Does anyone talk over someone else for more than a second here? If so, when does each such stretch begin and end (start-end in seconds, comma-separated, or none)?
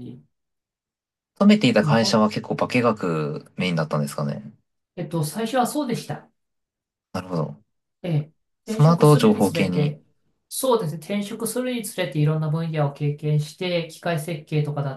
8.7-9.9